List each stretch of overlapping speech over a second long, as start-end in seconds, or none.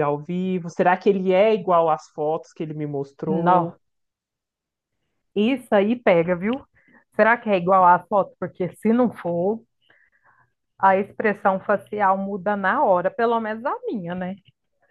none